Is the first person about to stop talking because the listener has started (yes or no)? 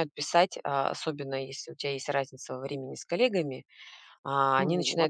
no